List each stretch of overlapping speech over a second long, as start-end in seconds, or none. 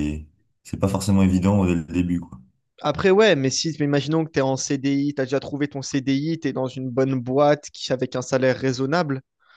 none